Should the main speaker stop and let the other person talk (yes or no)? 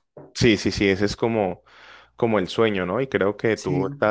no